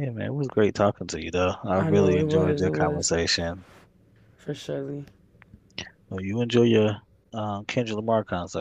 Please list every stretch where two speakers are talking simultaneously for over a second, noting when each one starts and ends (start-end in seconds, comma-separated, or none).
1.7-3.1